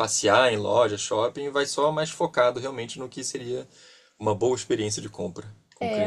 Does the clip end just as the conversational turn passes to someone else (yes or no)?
yes